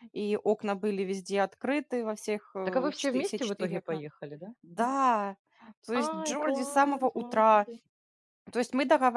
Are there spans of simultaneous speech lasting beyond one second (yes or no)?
yes